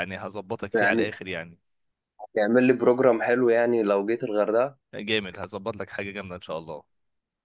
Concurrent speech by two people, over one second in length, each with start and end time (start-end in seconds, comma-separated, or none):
none